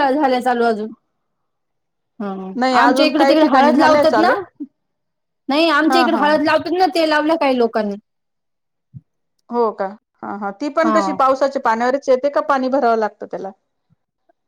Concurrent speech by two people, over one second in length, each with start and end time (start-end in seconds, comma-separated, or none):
2.8-4.3